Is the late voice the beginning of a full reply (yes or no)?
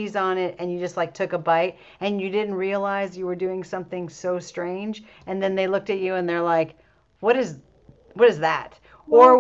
no